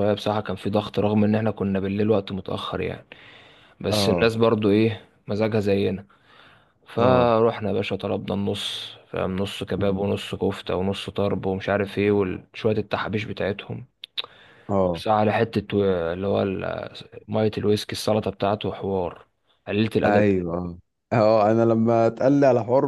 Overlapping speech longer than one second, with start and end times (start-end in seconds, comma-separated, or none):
none